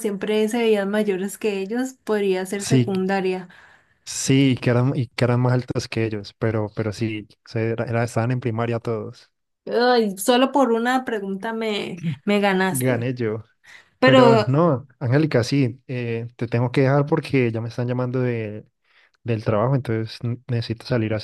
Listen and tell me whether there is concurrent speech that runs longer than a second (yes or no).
no